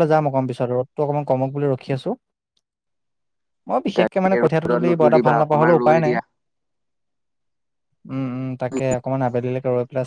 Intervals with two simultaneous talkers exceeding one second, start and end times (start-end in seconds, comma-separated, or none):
4.0-6.2